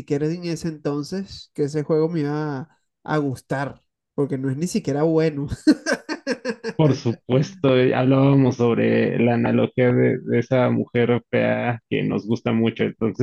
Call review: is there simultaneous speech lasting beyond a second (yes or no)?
no